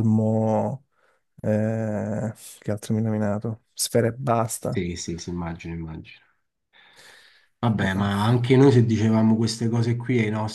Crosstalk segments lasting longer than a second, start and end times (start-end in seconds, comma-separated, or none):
none